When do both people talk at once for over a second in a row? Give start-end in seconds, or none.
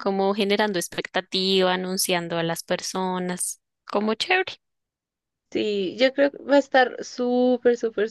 none